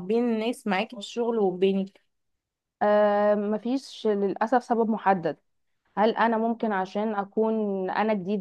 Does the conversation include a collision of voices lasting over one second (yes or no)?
no